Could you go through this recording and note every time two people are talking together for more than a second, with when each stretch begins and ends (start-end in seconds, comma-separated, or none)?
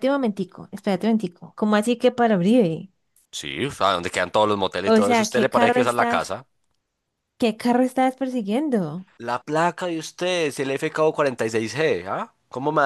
4.8-6.3